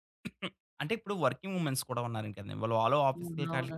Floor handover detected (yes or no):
no